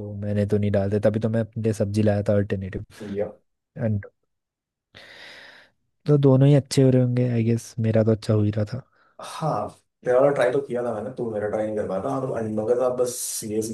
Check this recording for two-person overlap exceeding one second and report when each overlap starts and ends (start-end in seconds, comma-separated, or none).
none